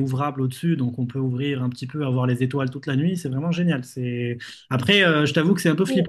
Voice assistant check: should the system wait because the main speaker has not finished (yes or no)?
yes